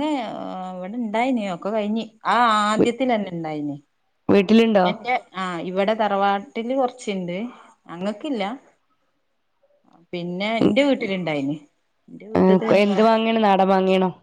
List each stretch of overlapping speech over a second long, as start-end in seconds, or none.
none